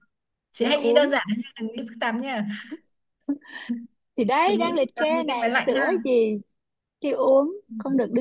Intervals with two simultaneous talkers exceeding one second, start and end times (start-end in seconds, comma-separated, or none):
4.5-6.0